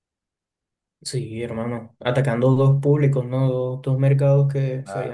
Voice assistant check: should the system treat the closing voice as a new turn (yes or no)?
no